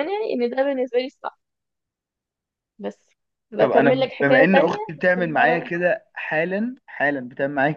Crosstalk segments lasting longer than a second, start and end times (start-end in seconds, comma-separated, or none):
3.6-5.7